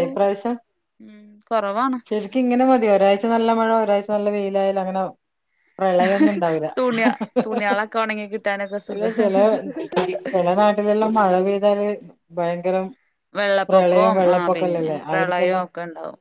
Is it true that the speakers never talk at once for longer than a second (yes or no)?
no